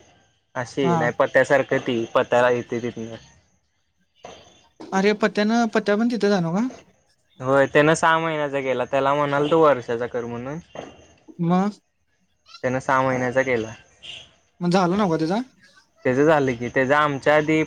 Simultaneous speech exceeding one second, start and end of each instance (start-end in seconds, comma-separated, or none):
none